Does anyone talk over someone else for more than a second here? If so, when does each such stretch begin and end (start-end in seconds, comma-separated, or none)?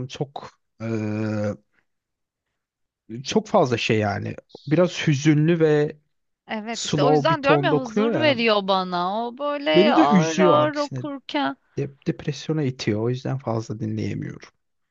6.7-8.4, 9.7-11.0